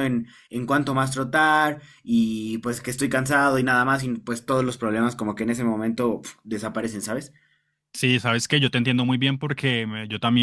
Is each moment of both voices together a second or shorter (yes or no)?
yes